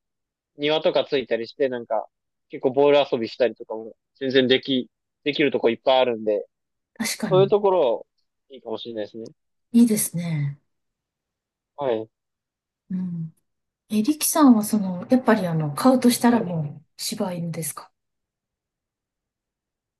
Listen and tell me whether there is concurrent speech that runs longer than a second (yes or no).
no